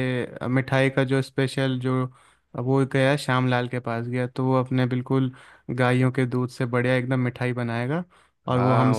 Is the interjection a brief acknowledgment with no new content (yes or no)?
no